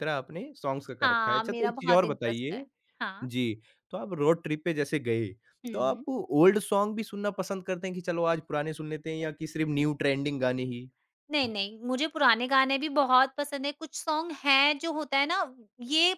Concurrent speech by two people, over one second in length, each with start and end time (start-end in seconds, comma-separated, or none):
1.0-2.6